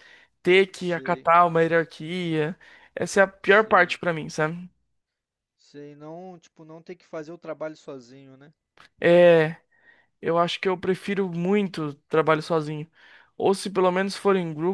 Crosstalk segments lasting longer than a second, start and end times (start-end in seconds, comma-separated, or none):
none